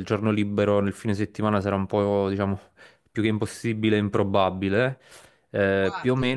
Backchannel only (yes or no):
yes